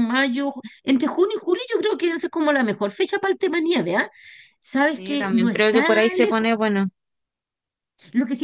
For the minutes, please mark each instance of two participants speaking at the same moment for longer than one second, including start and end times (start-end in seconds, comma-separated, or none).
4.9-6.5